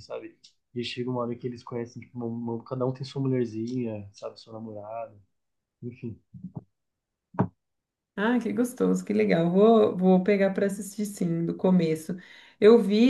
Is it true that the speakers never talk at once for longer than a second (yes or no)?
yes